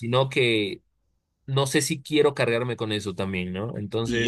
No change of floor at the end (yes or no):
no